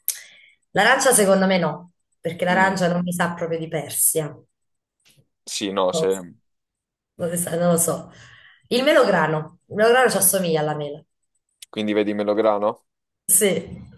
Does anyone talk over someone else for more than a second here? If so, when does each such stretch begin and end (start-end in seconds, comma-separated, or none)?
none